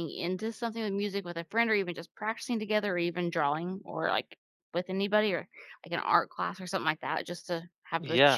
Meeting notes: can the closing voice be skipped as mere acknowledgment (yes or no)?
no